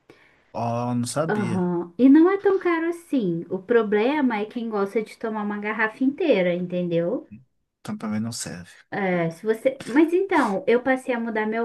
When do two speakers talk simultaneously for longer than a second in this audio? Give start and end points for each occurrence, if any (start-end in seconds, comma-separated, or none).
none